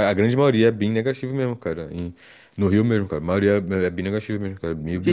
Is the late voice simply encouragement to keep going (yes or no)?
no